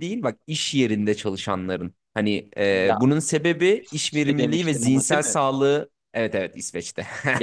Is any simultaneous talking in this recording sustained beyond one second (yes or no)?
yes